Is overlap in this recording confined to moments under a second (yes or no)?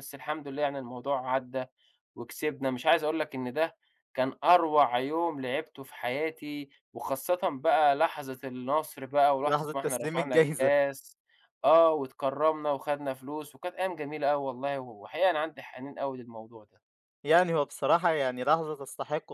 no